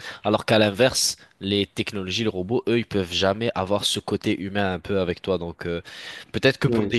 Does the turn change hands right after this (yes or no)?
no